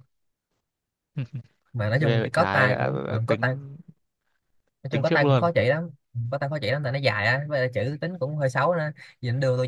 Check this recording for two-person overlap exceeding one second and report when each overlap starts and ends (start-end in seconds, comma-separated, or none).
2.0-3.4